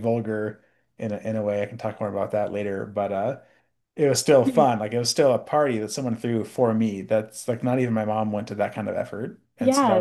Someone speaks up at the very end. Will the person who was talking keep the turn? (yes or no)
no